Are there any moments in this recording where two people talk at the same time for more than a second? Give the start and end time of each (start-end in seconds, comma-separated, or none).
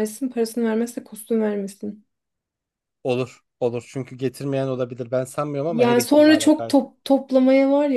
5.7-6.9